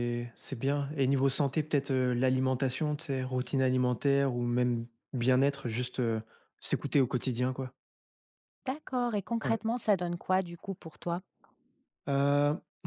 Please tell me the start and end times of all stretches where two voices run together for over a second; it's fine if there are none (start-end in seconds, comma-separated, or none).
none